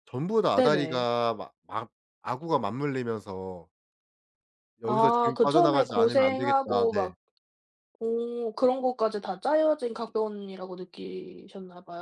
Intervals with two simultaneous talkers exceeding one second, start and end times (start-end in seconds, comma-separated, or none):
4.8-7.1